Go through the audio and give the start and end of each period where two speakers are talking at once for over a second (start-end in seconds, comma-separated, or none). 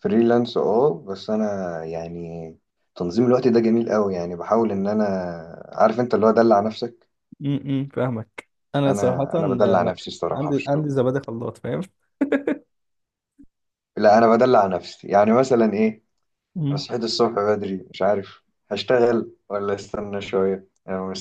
8.9-10.9